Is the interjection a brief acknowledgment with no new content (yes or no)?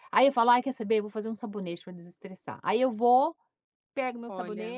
yes